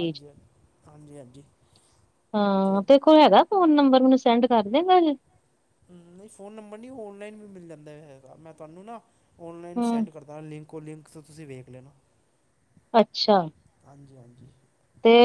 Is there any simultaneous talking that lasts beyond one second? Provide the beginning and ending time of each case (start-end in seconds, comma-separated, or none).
none